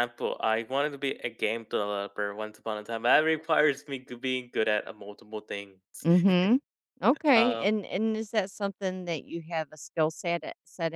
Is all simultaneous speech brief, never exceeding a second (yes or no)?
yes